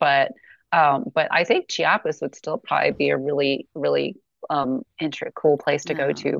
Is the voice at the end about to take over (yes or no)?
no